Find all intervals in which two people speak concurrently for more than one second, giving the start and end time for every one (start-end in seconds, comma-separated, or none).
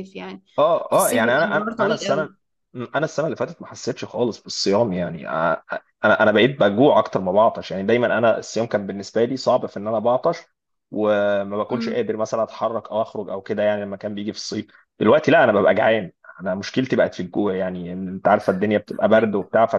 0.9-2.3